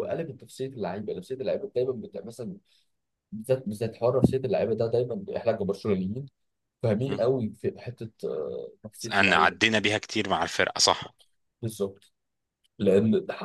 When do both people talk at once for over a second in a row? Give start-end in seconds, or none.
none